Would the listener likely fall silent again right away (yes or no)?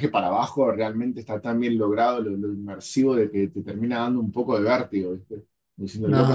yes